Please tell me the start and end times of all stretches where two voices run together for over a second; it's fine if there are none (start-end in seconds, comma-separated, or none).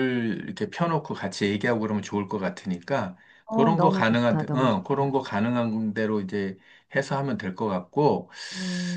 3.5-5.2